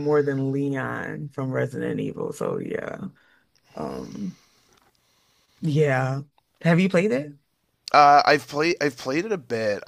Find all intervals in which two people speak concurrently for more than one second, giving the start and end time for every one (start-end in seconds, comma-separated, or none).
none